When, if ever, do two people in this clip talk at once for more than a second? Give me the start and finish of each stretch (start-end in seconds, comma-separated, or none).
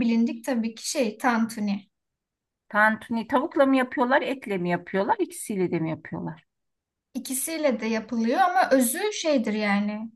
none